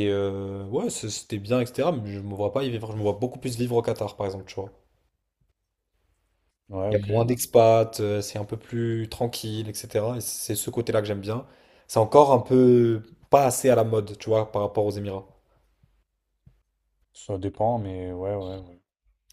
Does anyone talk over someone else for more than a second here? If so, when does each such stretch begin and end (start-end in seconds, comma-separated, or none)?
none